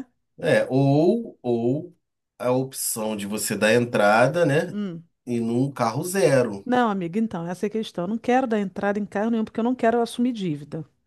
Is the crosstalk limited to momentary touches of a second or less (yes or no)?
yes